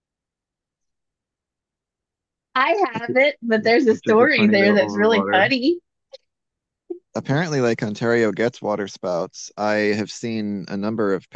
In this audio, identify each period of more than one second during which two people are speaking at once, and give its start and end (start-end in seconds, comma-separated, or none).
3.9-5.5